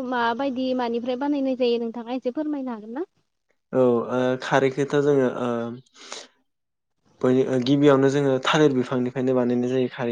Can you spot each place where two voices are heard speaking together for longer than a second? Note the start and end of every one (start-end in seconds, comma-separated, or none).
none